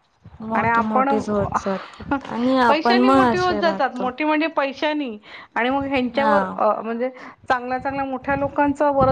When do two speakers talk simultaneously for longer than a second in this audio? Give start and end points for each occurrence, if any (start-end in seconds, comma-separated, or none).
2.7-4.1